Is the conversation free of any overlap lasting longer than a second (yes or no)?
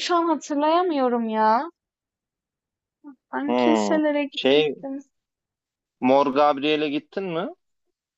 no